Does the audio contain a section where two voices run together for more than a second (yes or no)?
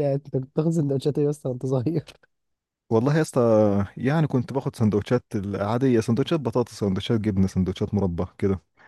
no